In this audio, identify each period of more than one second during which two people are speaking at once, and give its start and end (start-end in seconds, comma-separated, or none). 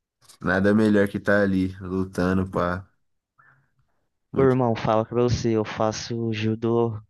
none